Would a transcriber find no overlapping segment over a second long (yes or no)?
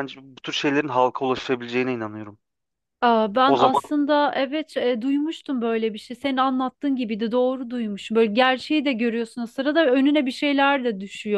yes